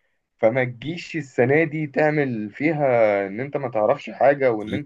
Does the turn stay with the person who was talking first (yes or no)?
yes